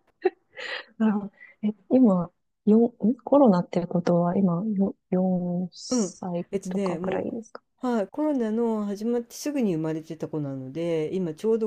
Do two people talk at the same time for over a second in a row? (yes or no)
yes